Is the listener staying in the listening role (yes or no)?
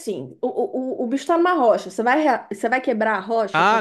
no